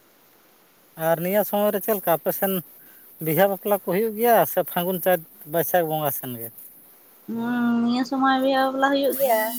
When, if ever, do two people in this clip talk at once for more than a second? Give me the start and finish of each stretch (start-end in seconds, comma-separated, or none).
none